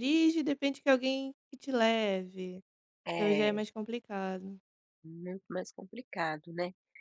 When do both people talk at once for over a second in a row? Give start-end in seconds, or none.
none